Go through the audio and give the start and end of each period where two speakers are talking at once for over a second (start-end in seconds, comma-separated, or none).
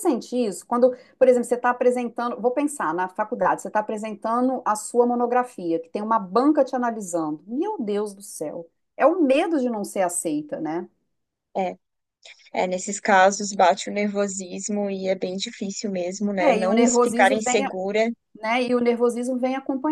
16.4-17.6